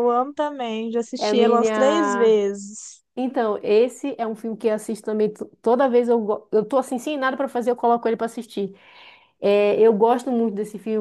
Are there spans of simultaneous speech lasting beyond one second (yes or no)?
yes